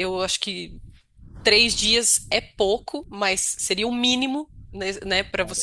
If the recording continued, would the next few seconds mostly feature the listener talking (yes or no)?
no